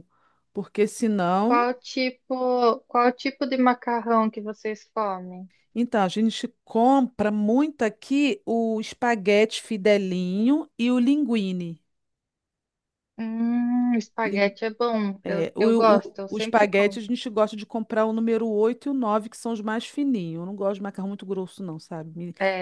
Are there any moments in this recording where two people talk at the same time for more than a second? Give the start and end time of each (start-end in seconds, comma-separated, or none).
15.2-17.0